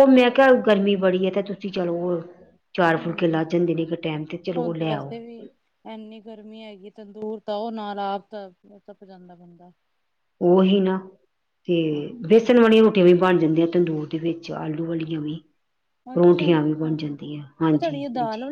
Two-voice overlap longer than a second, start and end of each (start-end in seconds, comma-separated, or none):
none